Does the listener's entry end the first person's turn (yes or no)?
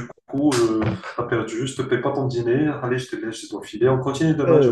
yes